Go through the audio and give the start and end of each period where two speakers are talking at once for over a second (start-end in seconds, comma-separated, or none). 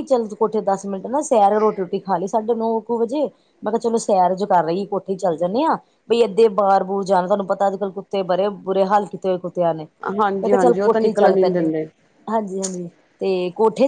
10.2-11.7